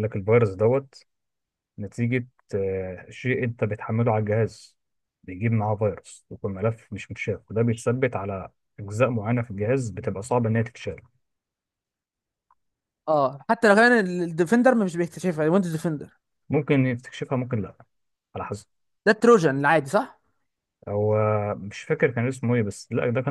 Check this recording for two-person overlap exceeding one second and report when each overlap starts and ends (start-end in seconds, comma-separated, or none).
none